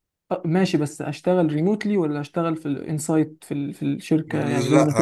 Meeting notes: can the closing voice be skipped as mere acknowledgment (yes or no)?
no